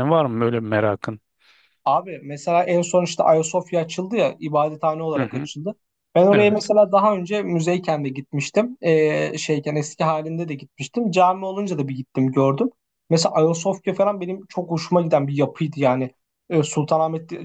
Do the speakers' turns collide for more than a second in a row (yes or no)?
no